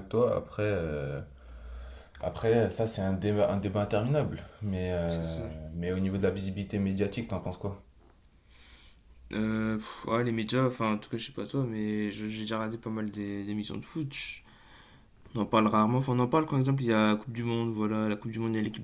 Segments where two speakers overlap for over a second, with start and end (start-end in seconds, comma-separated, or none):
none